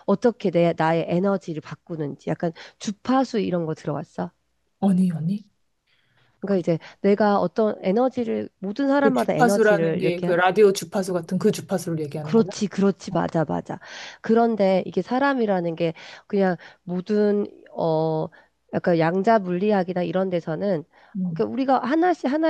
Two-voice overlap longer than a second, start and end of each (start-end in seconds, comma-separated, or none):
9.0-10.3